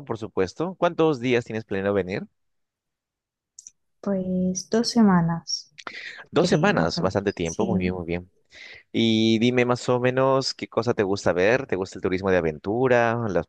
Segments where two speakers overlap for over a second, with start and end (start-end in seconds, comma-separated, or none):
6.4-7.9